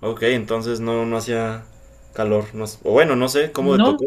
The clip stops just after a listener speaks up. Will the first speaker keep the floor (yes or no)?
no